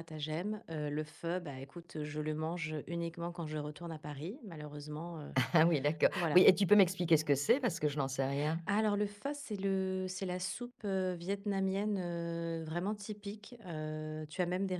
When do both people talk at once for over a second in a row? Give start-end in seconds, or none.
none